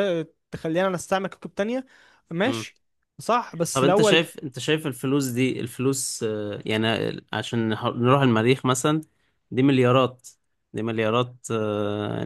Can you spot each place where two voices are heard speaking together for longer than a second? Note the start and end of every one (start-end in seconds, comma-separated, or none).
none